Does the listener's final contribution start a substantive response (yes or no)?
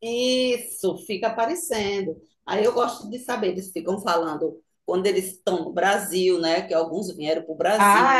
yes